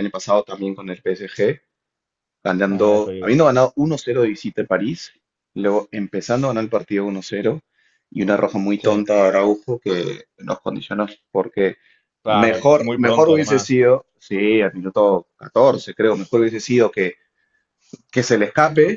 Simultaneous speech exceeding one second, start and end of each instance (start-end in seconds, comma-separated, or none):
12.3-13.8